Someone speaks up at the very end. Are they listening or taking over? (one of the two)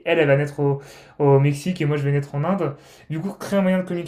listening